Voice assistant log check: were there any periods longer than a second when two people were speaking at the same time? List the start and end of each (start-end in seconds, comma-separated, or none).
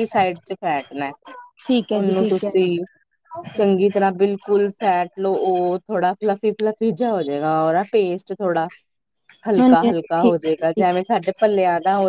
9.6-11.0